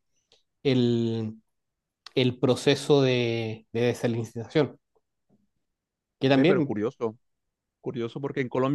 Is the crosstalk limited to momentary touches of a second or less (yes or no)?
yes